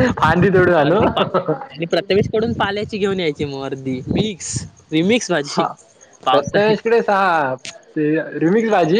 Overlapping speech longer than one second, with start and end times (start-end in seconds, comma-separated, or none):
none